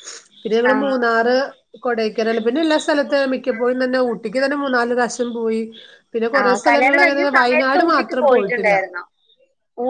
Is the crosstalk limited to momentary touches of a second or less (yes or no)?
no